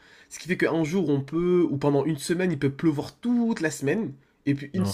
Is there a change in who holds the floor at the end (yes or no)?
no